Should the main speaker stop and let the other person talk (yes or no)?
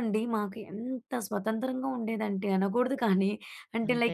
no